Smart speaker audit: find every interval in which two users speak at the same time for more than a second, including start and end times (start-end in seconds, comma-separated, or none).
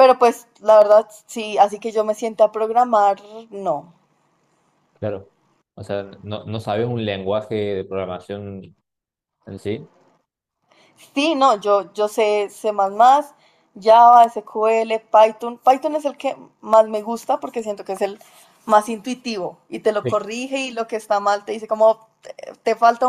none